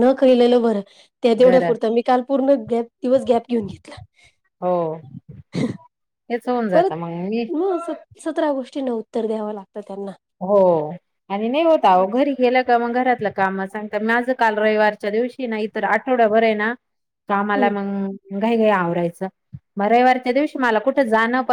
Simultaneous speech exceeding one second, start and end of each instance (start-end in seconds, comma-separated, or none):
none